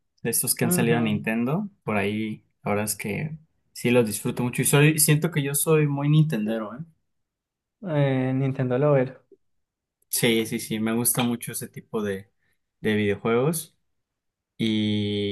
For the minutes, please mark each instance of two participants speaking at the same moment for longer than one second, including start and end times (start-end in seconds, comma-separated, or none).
none